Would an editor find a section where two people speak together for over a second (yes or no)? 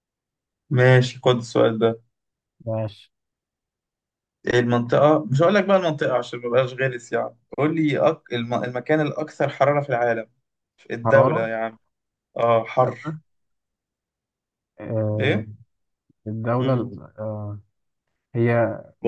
no